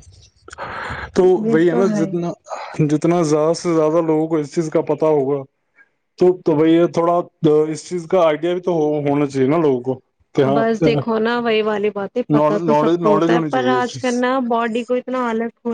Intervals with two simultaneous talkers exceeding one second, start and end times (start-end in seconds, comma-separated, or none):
12.7-14.2